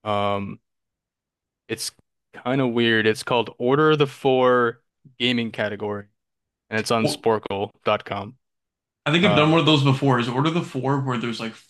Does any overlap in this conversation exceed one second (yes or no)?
no